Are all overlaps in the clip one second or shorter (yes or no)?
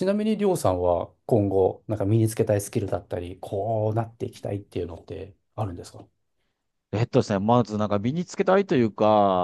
yes